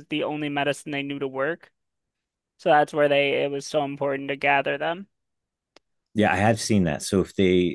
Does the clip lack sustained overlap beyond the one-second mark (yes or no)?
yes